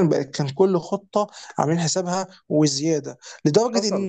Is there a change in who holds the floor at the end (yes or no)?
no